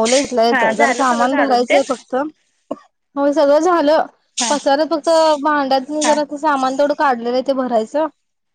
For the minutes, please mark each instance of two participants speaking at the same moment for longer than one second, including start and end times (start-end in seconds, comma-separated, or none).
0.5-1.8